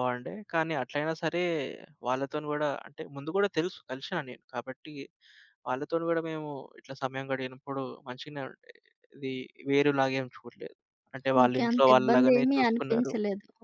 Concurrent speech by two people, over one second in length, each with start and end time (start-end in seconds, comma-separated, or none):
11.4-13.1